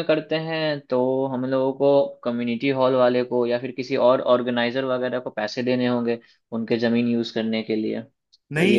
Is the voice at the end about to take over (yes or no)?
yes